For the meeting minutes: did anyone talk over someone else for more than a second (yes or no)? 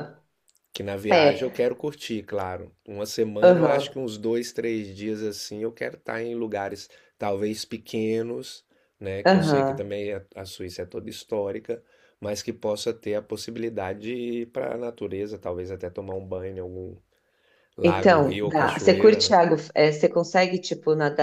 yes